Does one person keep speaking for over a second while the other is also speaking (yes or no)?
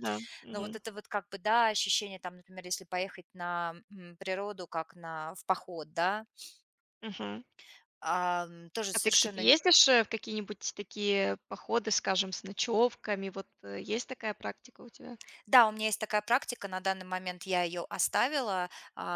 no